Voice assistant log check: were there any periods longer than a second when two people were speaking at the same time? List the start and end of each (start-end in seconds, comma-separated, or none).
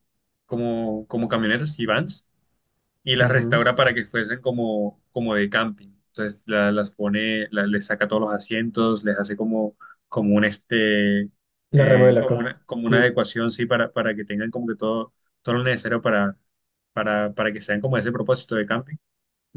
11.8-13.2